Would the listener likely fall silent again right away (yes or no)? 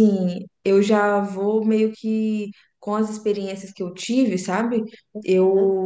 yes